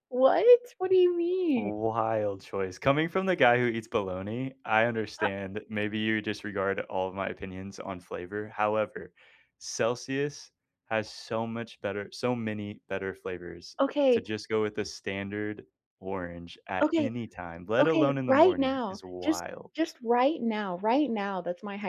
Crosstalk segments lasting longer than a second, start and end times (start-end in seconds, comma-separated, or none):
17.8-19.7